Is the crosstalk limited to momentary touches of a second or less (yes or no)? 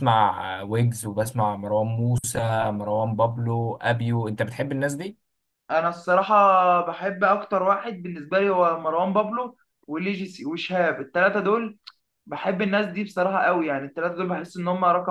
yes